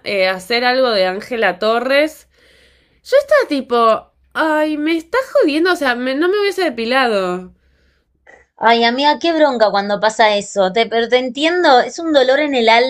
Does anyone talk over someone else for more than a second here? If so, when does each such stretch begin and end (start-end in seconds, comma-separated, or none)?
none